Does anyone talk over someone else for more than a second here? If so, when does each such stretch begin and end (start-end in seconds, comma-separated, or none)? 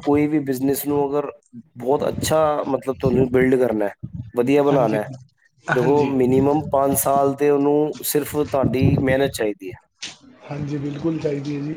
none